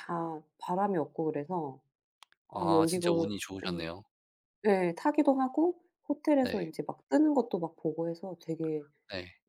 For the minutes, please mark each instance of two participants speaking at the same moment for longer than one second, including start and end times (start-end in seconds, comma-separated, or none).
2.5-3.9